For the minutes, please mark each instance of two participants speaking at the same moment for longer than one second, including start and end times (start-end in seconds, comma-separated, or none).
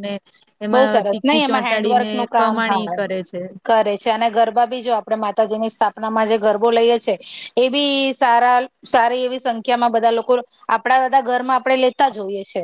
0.7-2.9